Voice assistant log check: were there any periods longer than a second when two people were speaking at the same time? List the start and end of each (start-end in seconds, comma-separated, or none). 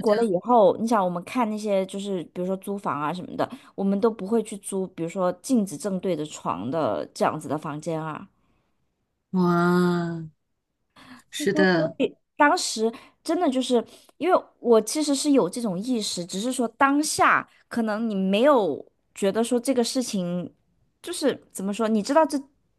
none